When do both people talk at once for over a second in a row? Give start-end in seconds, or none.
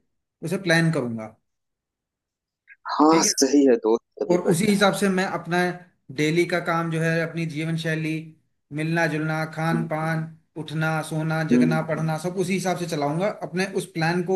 none